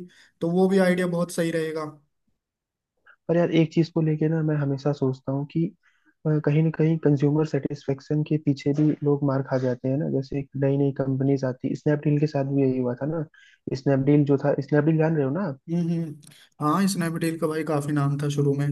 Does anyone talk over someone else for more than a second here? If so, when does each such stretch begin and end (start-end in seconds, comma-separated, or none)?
none